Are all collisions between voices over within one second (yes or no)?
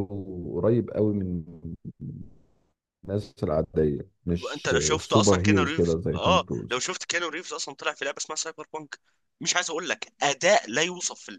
no